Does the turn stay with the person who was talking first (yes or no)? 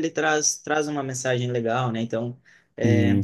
yes